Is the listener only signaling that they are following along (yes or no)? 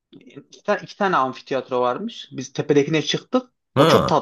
yes